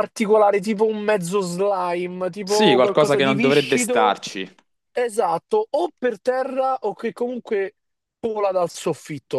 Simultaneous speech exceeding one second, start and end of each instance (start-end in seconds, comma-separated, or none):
2.4-4.2